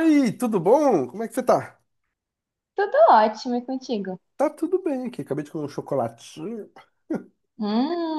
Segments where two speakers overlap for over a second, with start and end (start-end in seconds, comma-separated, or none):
none